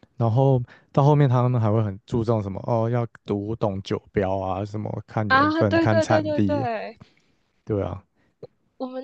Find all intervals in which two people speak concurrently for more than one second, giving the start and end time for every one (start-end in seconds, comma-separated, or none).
5.3-6.7